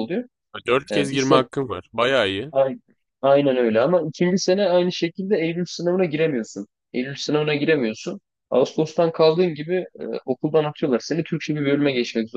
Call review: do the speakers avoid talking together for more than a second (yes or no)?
yes